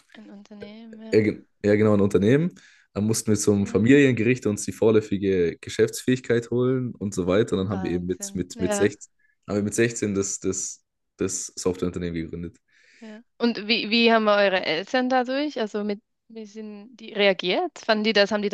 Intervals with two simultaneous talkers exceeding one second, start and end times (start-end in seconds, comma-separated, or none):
7.5-8.9